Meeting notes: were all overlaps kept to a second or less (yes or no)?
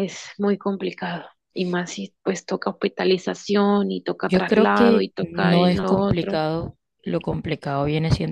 no